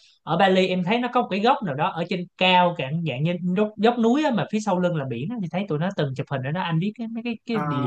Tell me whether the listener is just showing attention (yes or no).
no